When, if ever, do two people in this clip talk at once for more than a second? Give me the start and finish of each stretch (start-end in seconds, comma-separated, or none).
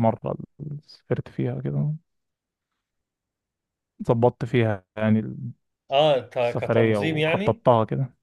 6.4-7.6